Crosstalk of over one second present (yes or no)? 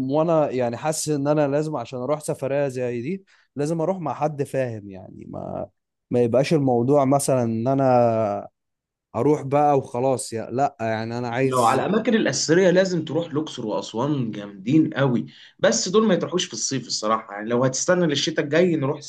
no